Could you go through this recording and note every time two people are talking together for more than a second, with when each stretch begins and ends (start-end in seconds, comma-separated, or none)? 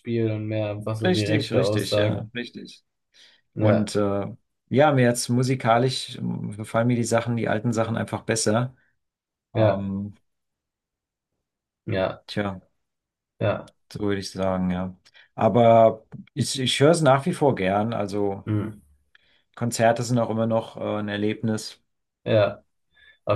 1.0-2.3